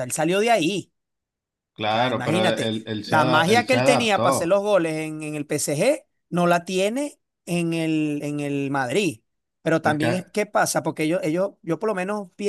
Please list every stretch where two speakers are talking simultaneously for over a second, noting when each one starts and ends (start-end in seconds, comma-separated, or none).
1.9-4.6